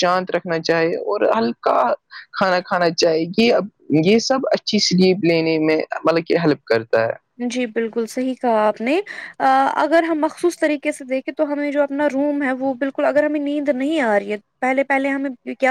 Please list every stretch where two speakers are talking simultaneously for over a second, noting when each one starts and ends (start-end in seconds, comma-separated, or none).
none